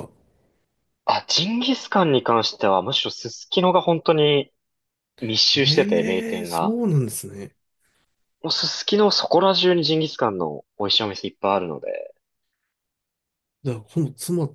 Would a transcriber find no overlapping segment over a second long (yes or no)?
no